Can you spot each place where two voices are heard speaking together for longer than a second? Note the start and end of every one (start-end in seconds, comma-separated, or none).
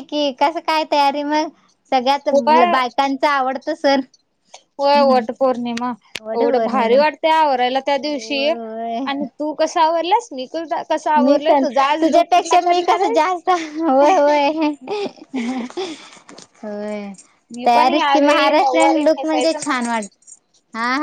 17.6-20.1